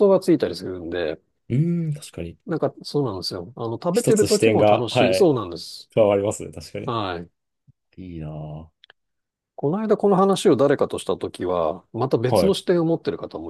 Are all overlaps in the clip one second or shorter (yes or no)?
no